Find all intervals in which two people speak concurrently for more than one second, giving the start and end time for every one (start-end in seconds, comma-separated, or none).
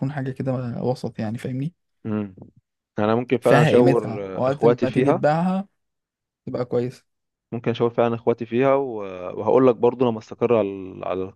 3.4-5.2